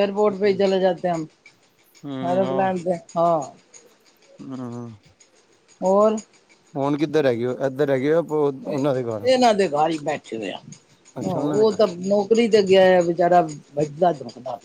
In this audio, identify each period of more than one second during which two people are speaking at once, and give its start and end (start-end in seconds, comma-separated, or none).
none